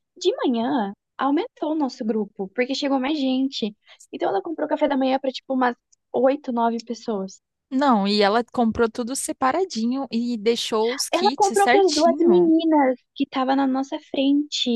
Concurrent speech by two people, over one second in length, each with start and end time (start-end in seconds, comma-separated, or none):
11.1-12.5